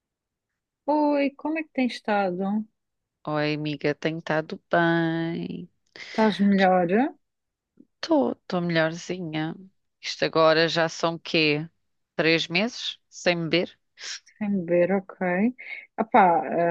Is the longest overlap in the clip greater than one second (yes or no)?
no